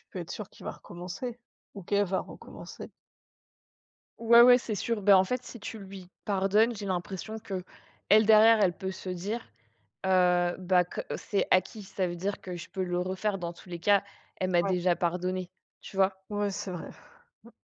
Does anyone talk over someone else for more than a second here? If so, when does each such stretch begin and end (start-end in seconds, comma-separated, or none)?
none